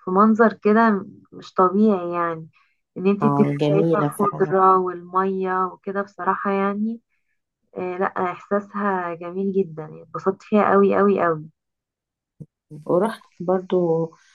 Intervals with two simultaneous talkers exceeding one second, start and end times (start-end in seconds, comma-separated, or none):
3.2-4.5